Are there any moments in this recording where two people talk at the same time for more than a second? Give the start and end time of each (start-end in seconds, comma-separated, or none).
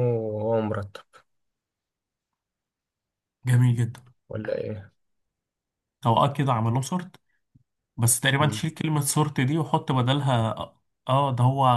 none